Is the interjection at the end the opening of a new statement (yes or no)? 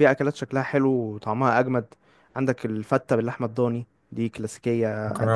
no